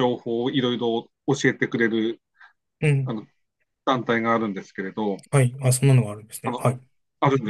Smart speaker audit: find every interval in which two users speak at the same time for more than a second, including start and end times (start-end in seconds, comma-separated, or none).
none